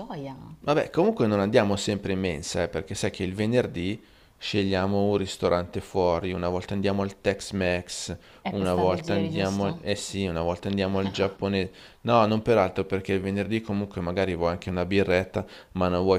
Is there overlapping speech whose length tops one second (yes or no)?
yes